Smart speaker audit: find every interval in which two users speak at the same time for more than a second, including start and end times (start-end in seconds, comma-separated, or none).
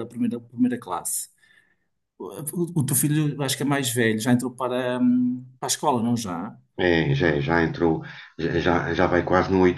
none